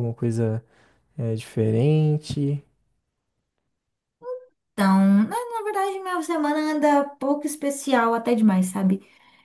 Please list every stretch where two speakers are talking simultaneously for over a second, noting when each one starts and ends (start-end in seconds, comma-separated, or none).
none